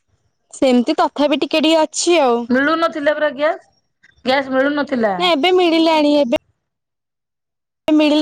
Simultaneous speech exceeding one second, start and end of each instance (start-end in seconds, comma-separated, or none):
none